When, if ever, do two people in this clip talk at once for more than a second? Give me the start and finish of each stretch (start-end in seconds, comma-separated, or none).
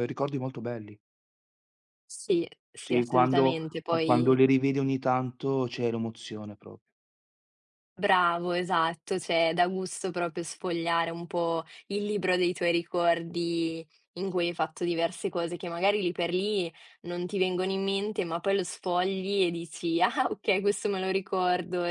2.8-4.4